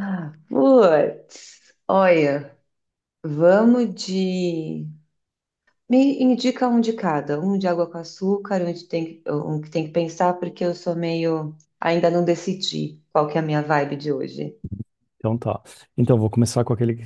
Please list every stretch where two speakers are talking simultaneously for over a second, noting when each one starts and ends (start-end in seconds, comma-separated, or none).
none